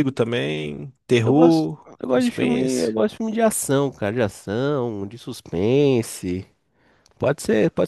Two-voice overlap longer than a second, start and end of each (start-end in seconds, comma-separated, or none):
1.2-2.9